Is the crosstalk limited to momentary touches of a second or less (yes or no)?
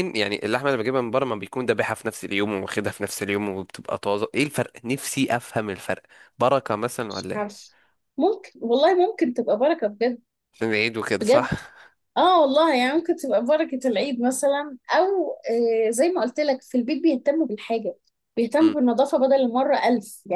yes